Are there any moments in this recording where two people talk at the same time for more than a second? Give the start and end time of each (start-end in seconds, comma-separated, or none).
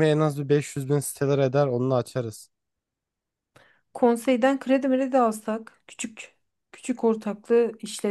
none